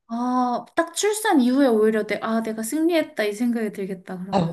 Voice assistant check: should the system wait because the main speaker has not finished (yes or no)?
no